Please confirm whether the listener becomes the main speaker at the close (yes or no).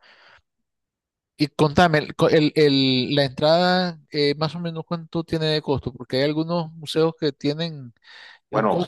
no